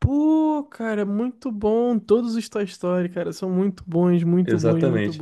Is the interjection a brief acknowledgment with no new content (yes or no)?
no